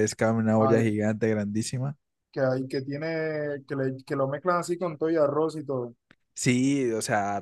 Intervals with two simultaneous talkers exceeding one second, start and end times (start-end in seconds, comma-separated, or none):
none